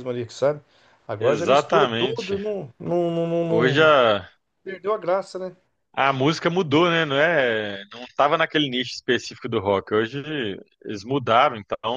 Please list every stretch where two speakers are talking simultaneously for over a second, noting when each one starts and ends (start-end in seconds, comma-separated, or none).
1.1-2.4